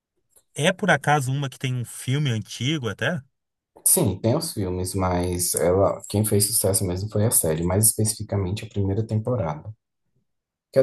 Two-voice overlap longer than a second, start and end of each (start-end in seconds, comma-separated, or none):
none